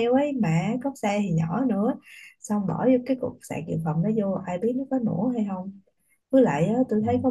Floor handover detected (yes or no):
no